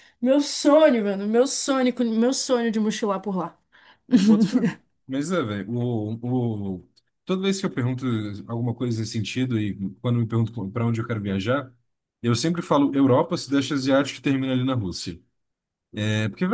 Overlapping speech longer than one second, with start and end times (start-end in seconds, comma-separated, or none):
none